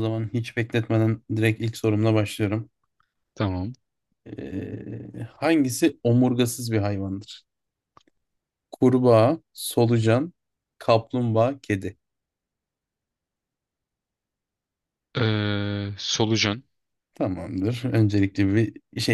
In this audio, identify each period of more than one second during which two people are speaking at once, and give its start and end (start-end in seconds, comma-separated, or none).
none